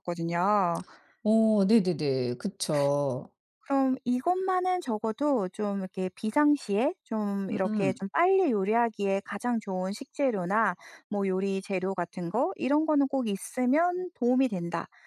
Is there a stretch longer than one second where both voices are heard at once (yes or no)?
no